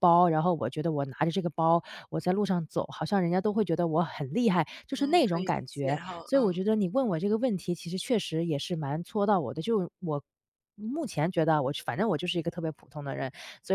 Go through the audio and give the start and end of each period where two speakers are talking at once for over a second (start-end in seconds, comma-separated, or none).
5.0-6.6